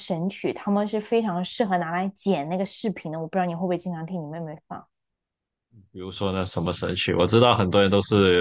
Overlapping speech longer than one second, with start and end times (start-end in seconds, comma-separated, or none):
none